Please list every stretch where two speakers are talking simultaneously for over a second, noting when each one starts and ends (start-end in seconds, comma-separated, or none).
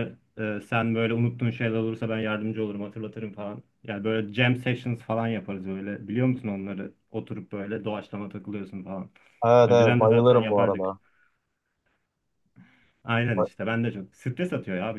9.7-10.9